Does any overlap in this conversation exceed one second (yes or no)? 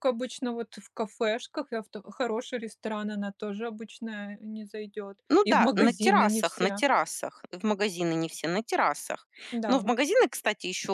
yes